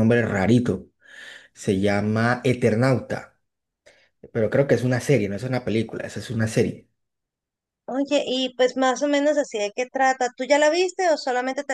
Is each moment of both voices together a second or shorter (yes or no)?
yes